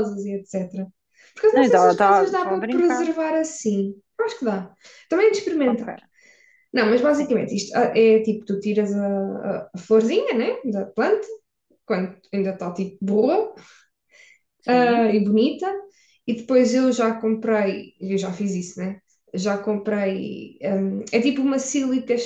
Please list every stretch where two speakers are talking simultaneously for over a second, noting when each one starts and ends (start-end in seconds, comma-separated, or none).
1.5-3.1